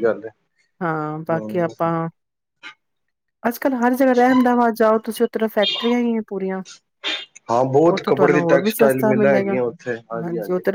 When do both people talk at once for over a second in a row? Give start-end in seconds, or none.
7.9-9.6